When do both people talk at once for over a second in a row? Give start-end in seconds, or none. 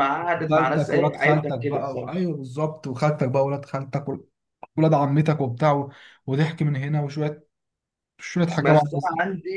0.5-2.3